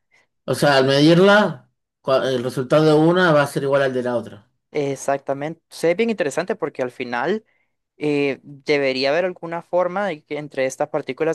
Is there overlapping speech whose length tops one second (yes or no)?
no